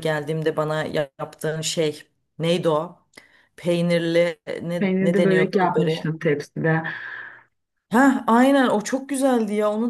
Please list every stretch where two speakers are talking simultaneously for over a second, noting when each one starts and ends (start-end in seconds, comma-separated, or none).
4.8-6.2